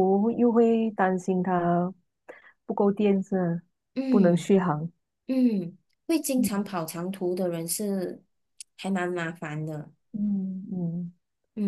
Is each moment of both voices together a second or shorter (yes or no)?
yes